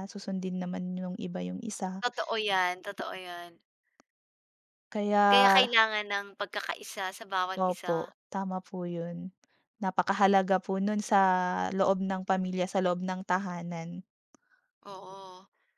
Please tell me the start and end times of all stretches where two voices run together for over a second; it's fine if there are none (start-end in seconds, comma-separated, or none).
none